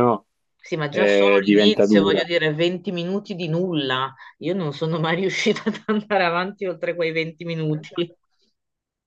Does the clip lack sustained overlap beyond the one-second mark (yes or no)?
no